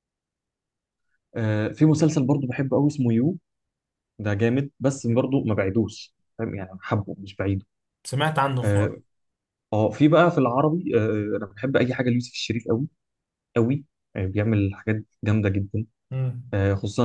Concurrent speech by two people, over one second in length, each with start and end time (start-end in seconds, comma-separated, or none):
none